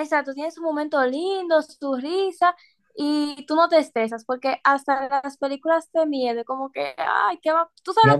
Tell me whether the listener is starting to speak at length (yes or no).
yes